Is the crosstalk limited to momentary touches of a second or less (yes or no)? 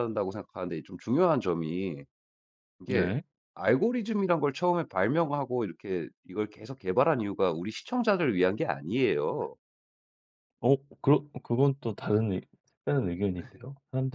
yes